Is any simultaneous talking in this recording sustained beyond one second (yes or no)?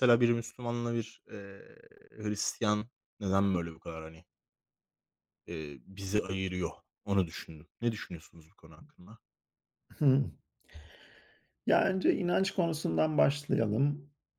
no